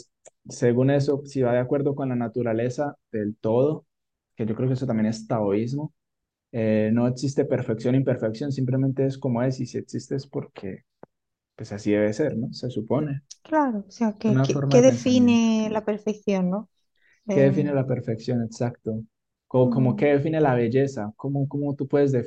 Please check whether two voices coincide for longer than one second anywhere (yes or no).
yes